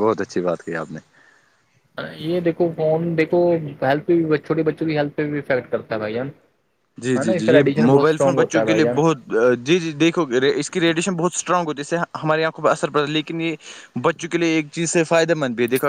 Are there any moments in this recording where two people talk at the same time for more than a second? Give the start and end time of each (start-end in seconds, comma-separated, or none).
7.2-9.0